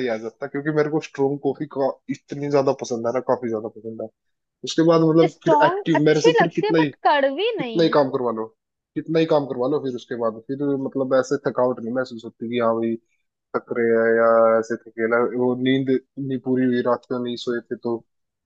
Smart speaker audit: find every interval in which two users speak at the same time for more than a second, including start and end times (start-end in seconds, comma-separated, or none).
5.3-6.9